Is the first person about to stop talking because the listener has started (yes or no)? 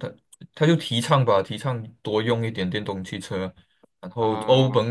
no